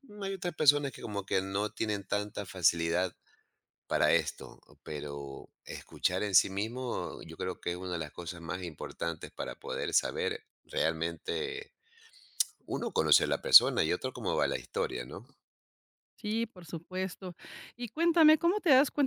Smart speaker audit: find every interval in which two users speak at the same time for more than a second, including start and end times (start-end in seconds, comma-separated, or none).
none